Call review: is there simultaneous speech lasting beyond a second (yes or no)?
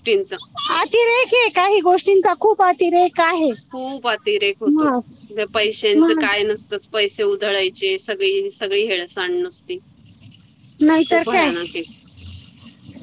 no